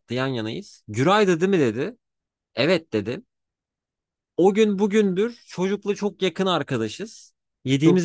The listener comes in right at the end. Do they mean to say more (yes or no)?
no